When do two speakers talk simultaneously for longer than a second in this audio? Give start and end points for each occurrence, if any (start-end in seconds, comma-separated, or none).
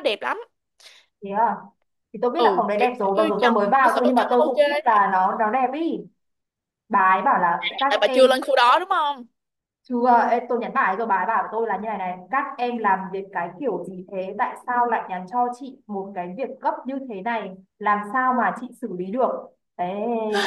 2.3-4.6